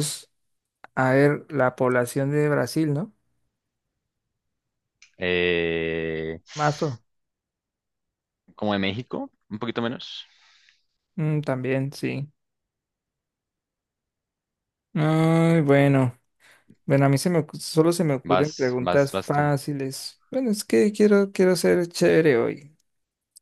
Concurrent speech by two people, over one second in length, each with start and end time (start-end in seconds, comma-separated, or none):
18.3-19.5